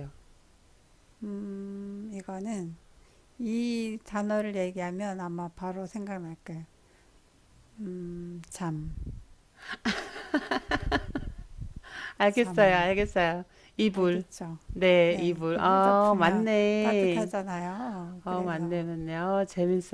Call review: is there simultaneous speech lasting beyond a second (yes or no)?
yes